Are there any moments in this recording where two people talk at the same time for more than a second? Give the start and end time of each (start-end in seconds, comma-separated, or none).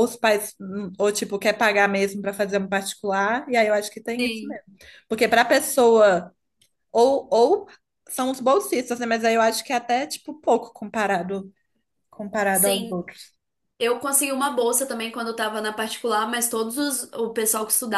none